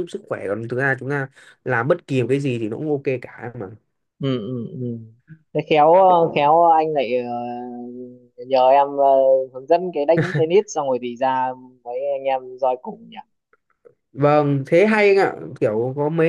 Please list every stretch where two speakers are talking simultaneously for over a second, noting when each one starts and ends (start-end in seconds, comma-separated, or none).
none